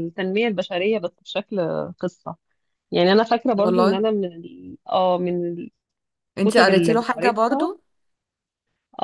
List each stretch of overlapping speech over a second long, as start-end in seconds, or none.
6.4-7.7